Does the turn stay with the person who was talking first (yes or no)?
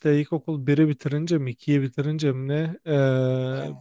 yes